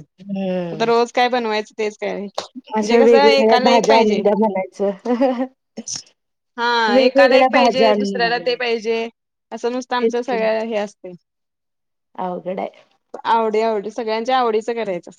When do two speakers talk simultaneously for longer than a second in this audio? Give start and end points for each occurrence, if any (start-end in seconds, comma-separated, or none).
2.8-4.2, 6.9-8.7